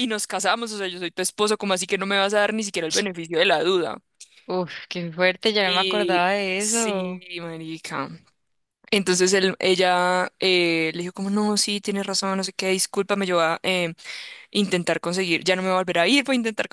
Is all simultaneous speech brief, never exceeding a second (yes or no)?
no